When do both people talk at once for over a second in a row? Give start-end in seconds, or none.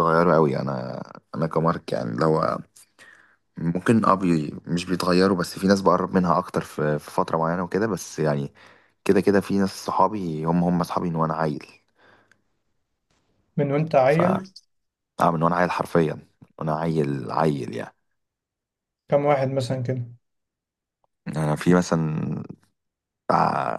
none